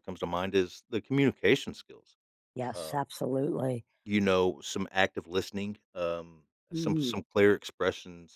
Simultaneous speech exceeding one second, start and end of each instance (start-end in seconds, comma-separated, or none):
none